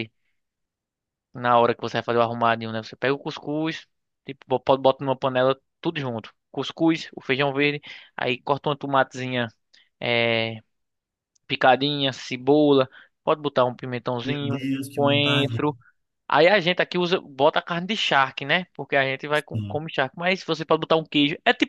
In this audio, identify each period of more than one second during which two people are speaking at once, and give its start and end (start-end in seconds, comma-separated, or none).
14.2-15.6